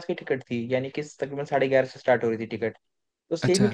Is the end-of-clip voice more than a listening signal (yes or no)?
no